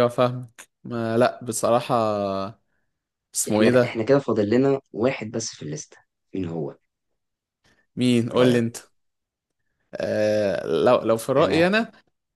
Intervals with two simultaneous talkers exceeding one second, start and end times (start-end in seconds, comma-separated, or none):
none